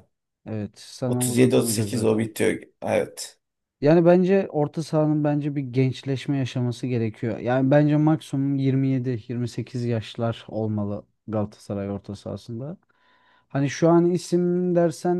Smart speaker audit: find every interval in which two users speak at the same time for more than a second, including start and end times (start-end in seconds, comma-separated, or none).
1.1-2.3